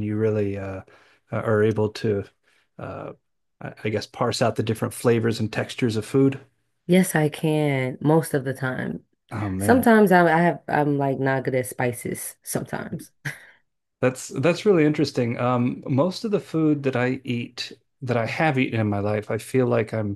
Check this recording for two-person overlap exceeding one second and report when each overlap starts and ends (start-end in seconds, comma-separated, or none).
none